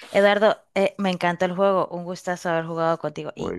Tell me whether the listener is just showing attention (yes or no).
yes